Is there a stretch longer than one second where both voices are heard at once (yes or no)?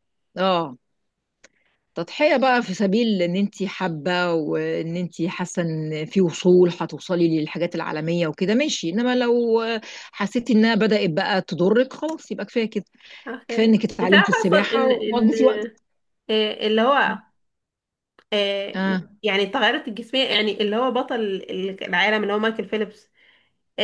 yes